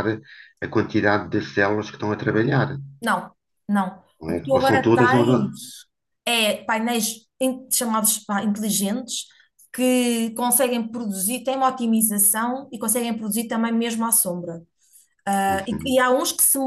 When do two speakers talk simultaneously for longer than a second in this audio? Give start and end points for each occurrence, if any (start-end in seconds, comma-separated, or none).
4.2-5.5